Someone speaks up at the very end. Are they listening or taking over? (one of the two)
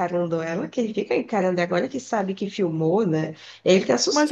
taking over